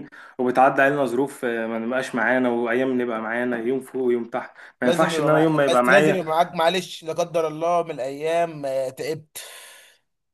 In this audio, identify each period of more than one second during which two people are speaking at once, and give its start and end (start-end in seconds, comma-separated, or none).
4.8-6.2